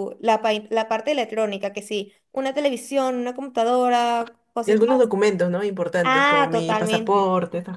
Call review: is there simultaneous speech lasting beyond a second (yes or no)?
yes